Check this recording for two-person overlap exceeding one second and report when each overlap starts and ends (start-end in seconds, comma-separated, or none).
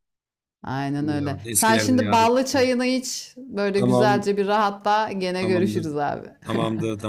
1.0-2.4